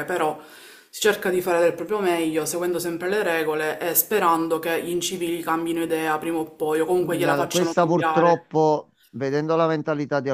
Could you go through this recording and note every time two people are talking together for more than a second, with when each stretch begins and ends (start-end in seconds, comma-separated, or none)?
6.8-8.4